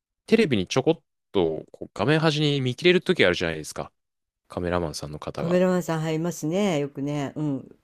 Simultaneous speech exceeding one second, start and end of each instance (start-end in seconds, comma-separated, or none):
none